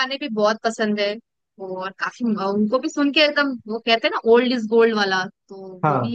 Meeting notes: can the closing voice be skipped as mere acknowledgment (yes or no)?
yes